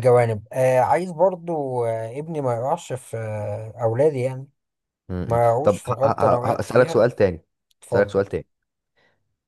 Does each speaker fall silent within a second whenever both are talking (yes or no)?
no